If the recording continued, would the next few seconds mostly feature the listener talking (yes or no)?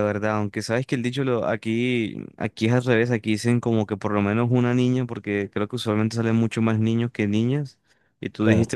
no